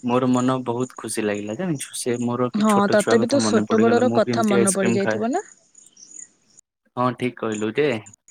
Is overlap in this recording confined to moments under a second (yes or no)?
no